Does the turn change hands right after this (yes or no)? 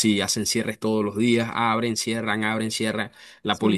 no